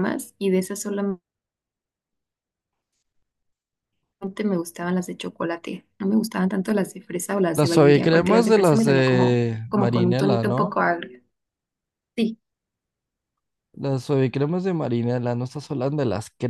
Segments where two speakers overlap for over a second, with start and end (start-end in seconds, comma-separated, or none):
7.5-10.8